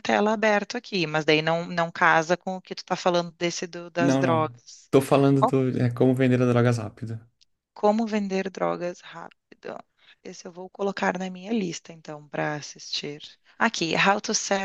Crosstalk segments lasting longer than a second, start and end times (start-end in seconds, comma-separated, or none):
none